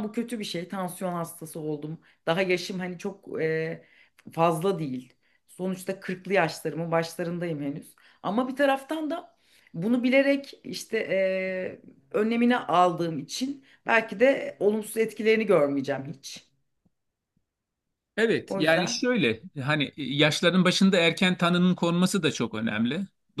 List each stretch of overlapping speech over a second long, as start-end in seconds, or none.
none